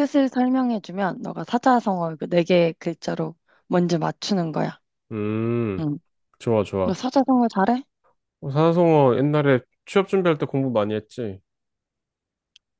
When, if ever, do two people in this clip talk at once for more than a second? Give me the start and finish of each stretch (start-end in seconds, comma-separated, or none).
none